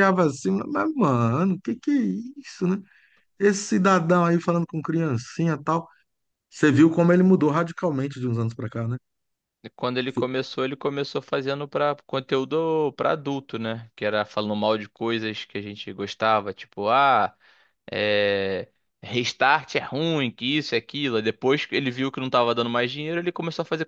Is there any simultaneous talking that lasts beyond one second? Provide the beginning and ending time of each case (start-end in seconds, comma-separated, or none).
none